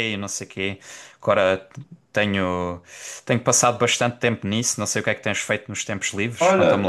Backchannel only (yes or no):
no